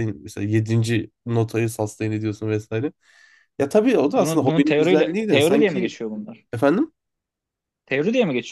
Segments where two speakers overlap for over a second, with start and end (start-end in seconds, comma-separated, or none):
4.1-5.9